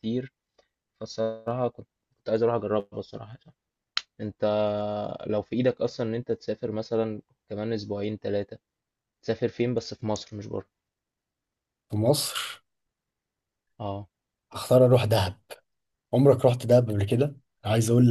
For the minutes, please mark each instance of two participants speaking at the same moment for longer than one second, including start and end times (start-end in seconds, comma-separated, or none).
none